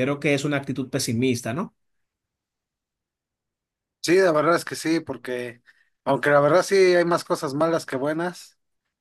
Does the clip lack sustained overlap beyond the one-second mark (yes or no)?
yes